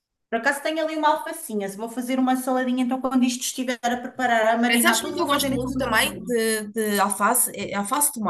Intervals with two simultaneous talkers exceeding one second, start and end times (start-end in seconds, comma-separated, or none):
4.7-6.3